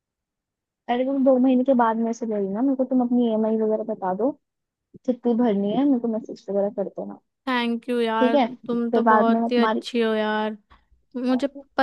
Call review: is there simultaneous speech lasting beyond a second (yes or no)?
yes